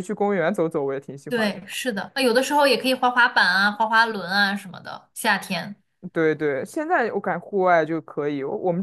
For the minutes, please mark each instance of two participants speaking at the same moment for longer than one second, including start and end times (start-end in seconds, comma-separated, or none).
none